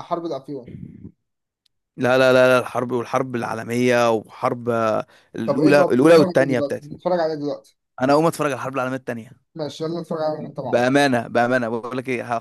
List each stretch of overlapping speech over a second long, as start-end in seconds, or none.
5.4-6.9